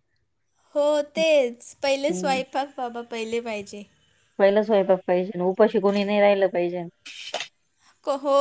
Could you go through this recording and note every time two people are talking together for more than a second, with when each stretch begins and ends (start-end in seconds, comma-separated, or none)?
none